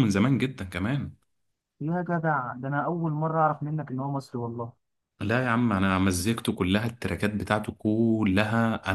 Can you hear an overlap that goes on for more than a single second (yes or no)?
no